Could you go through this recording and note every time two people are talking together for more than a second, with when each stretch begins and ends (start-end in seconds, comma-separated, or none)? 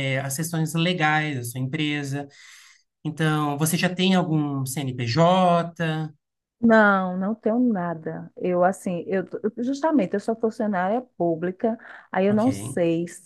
none